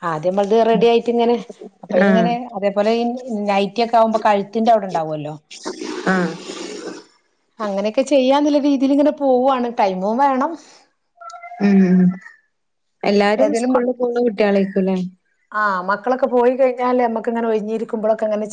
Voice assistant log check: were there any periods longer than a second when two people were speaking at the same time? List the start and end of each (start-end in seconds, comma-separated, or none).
none